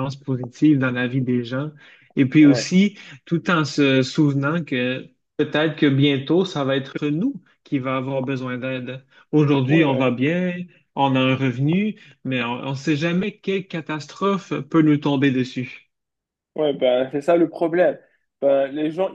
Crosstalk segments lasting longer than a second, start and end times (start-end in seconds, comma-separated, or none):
none